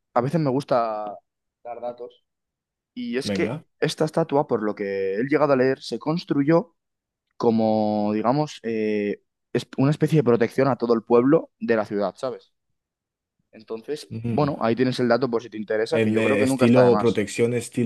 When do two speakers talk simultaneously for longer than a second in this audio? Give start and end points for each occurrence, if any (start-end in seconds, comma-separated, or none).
15.9-17.2